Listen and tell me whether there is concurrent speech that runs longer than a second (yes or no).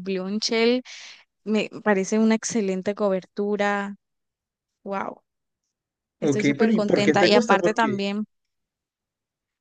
yes